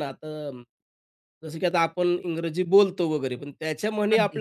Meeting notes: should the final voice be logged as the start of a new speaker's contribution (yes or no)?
no